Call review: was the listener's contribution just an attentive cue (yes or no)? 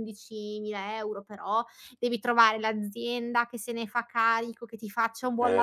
yes